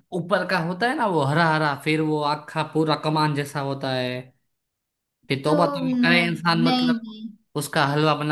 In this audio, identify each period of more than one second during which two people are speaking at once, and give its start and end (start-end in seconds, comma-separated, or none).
5.5-7.0